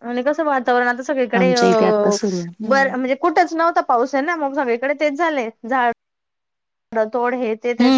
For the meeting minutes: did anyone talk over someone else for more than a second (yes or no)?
no